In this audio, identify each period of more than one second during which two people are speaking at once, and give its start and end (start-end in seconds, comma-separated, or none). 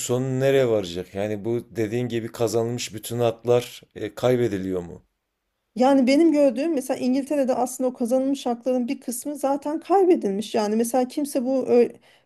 none